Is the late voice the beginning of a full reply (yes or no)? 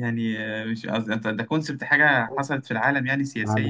yes